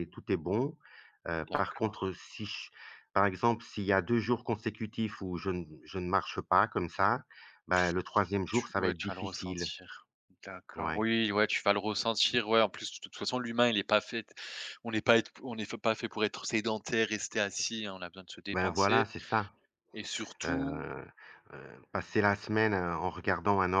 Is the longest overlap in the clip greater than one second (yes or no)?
yes